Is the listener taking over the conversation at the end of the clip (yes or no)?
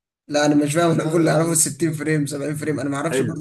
yes